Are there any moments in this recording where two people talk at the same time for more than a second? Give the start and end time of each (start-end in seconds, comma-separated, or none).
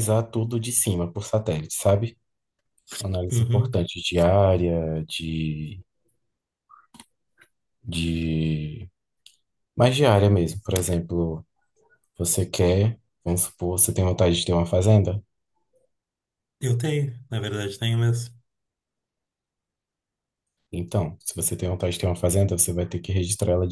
none